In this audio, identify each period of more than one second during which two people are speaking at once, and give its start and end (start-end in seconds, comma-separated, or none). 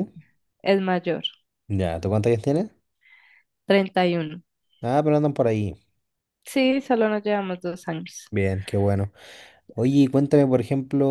none